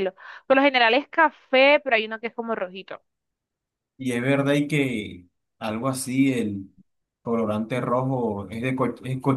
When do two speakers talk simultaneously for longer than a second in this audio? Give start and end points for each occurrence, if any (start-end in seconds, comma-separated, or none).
none